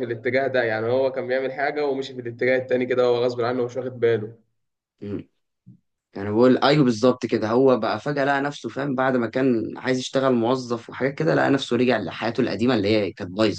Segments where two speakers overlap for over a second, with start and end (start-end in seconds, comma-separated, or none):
none